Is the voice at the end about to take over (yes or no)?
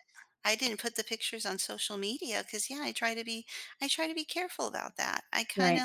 no